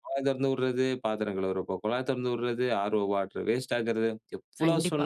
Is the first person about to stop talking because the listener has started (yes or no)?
no